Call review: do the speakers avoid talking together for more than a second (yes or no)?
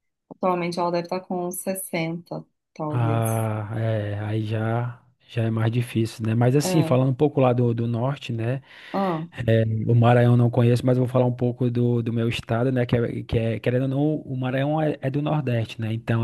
yes